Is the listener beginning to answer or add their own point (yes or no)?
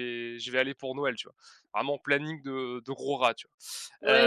yes